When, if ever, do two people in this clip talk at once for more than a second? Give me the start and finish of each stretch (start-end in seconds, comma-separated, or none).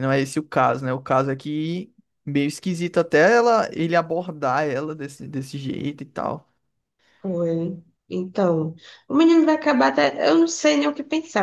none